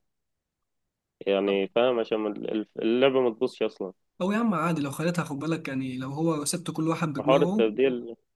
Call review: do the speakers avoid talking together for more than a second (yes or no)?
yes